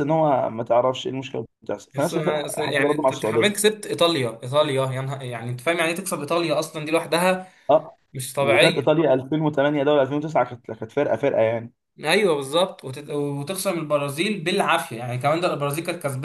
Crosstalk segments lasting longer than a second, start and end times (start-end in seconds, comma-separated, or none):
1.9-3.7